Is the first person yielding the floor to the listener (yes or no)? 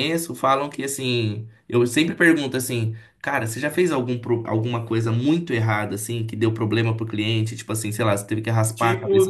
yes